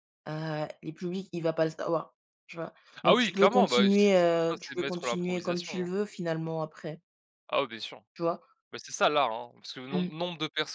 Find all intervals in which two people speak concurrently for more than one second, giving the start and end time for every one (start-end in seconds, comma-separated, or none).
3.0-5.9